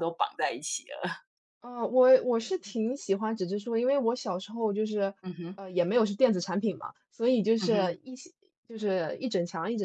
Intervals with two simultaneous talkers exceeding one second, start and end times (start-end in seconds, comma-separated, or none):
none